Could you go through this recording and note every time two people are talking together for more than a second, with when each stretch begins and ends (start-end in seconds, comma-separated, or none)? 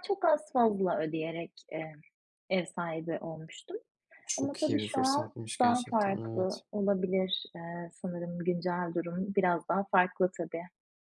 4.4-6.6